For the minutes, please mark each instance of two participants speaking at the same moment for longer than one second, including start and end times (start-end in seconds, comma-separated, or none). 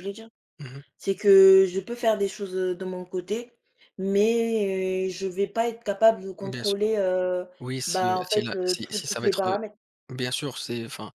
7.9-9.6